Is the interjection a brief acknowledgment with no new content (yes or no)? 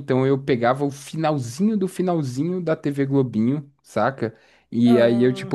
yes